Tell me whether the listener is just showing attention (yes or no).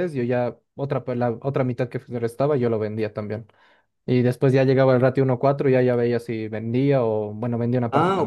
no